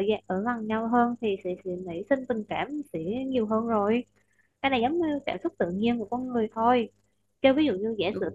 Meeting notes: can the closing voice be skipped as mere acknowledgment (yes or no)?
yes